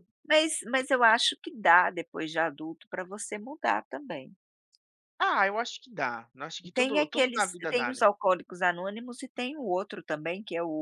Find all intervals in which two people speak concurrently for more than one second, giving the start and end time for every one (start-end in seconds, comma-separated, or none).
6.7-8.1